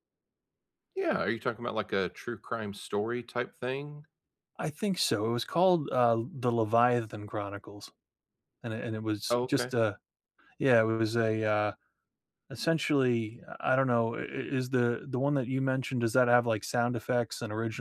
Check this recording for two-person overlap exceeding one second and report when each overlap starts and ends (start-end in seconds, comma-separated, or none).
none